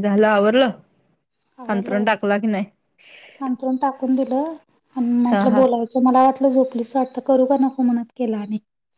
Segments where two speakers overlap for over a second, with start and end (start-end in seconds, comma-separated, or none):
none